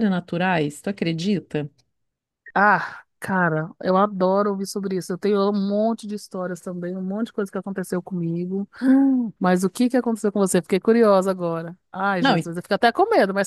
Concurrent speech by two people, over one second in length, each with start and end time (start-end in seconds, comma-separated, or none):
none